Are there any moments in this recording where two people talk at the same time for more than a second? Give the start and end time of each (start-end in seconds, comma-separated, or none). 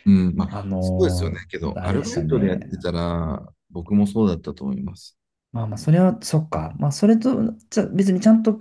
0.5-2.7